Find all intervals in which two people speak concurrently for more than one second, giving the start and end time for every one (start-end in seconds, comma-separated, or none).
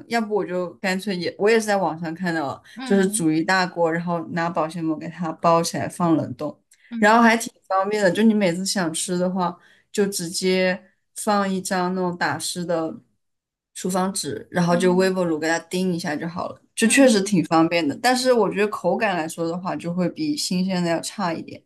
none